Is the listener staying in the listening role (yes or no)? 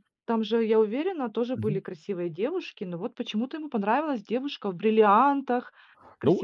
no